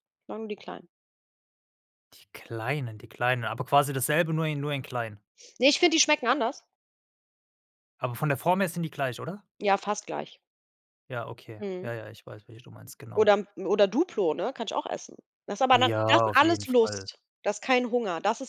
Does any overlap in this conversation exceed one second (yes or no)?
yes